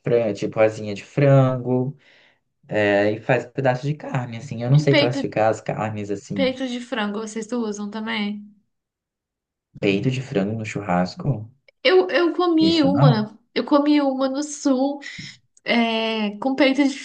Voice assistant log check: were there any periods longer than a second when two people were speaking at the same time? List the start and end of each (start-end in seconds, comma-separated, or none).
none